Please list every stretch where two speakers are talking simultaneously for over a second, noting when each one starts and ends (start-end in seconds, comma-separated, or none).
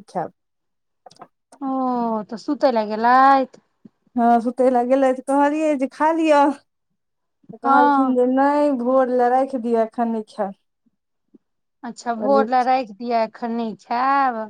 none